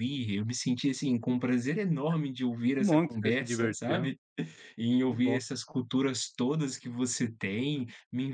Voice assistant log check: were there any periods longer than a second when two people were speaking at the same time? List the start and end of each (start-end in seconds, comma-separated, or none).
2.7-4.1